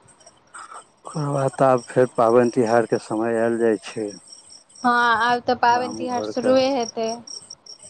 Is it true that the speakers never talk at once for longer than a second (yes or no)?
yes